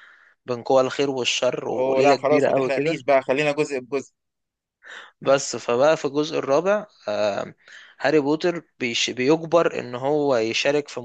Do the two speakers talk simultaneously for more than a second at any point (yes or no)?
yes